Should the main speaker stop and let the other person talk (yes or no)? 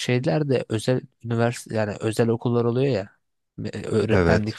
no